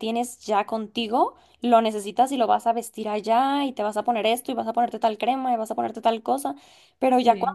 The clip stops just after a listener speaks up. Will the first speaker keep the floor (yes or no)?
yes